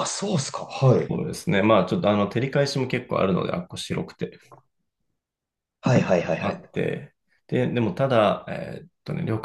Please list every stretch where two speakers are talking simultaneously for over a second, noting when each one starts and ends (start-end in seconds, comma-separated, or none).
none